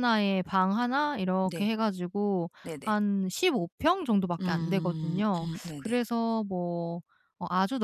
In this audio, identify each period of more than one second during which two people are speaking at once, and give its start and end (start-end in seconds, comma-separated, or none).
4.4-6.0